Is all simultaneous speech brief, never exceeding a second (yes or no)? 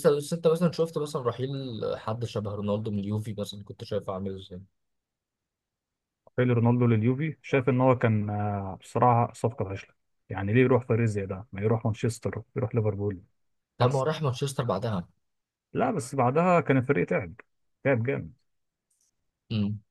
yes